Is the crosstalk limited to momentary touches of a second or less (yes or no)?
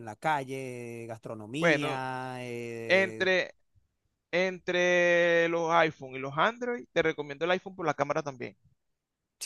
yes